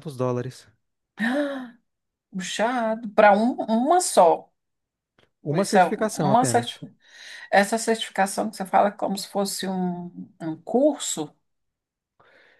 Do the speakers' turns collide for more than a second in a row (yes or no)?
yes